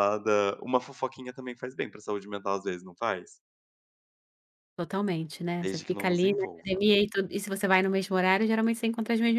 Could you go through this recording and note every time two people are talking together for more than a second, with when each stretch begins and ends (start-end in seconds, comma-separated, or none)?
5.6-6.8